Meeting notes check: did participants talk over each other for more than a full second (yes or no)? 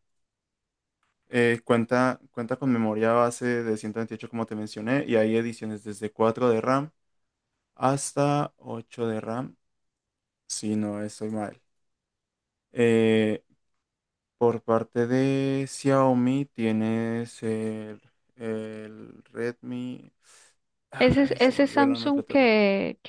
yes